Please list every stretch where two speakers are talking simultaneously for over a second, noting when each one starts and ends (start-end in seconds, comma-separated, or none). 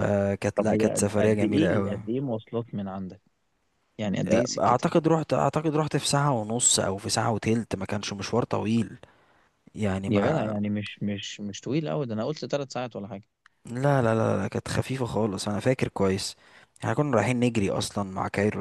0.6-2.0